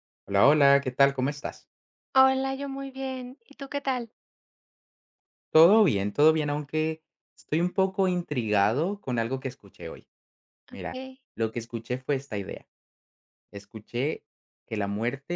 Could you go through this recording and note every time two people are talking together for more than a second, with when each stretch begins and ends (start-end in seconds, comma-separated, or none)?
none